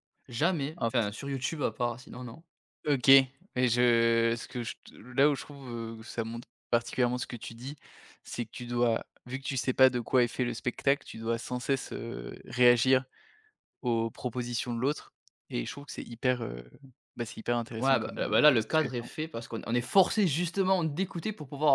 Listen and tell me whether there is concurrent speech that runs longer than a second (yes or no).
yes